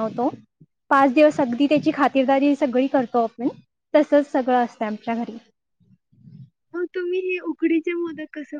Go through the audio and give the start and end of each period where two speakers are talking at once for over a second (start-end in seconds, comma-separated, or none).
none